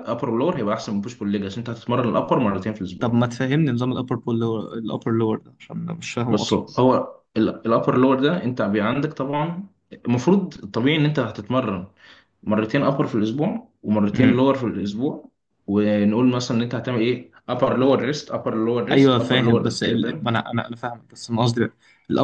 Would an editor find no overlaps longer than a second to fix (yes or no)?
no